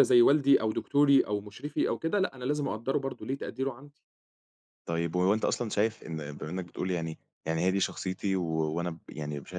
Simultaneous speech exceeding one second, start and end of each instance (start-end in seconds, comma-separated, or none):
none